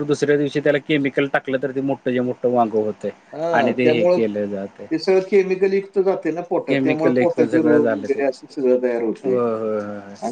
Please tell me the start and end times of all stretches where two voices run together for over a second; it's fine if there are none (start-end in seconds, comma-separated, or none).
6.7-8.2